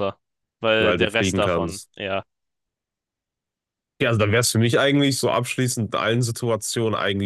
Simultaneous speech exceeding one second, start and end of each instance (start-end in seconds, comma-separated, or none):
0.8-2.0